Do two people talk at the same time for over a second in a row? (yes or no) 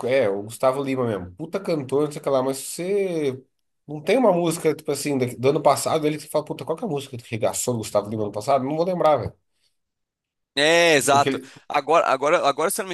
no